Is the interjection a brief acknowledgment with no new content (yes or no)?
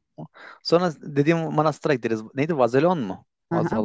no